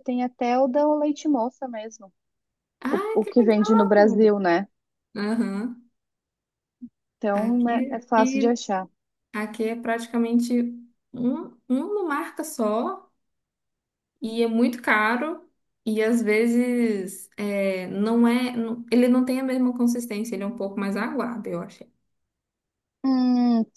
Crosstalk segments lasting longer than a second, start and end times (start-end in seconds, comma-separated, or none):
2.9-4.3, 7.3-8.6